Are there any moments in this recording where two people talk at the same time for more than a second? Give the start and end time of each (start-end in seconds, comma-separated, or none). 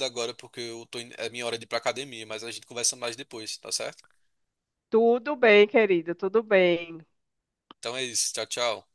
none